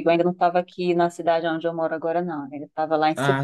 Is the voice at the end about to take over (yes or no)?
no